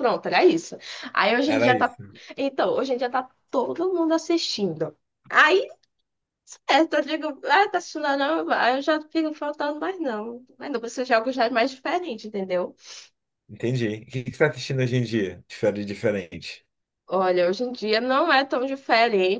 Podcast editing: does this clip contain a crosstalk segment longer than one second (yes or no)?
no